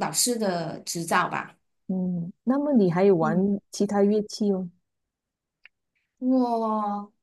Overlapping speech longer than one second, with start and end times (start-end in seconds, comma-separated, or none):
none